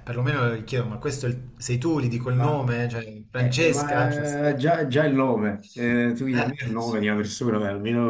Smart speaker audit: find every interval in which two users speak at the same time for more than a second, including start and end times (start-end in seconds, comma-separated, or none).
3.3-4.6